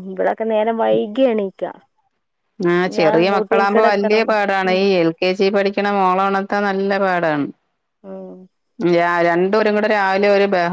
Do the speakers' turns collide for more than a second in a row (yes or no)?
yes